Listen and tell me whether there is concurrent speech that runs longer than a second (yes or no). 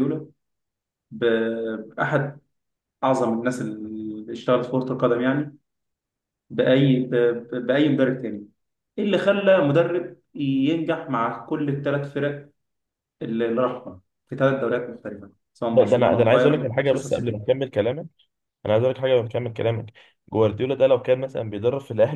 yes